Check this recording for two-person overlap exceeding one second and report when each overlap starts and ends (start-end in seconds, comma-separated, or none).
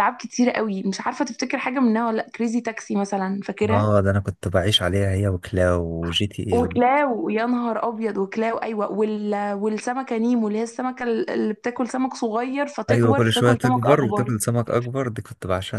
12.9-14.3